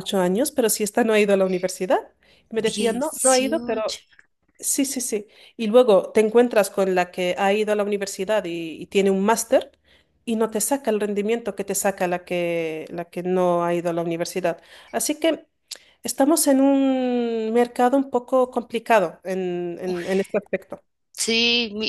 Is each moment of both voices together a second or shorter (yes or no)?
no